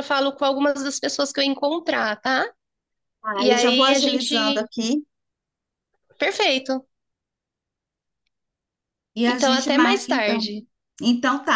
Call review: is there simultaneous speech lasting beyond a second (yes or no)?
yes